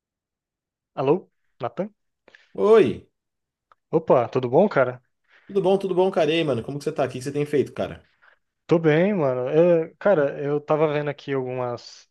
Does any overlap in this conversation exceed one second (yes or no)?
no